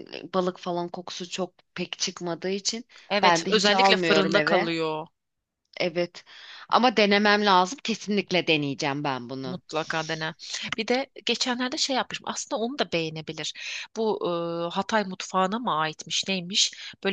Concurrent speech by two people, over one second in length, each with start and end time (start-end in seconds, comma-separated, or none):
3.2-4.7